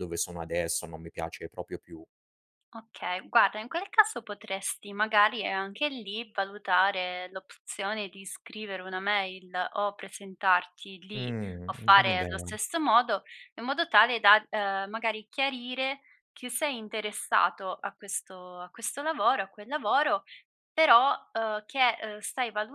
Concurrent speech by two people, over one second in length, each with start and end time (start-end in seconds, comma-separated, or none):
11.1-12.6